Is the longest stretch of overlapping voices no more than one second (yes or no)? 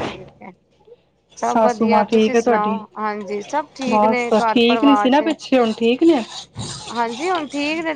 no